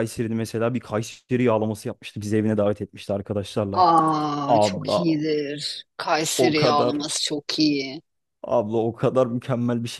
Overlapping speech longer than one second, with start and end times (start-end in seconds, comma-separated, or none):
none